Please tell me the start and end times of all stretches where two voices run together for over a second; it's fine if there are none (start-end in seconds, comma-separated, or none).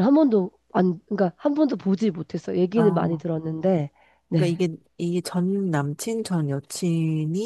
none